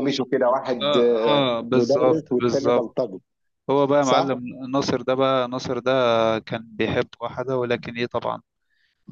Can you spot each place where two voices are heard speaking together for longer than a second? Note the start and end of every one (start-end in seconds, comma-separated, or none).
0.8-3.0